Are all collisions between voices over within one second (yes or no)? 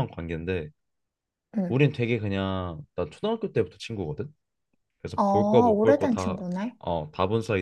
no